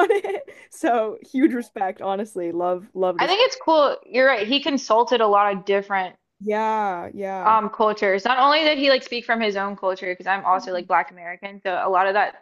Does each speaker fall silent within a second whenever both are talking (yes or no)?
yes